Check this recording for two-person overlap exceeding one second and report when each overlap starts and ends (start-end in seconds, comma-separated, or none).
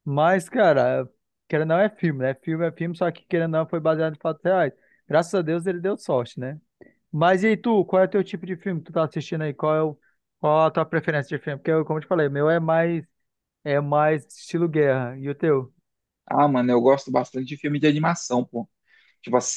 none